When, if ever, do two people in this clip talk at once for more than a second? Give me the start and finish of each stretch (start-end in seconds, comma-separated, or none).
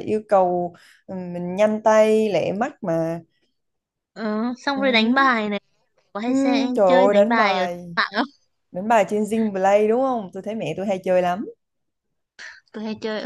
6.3-7.9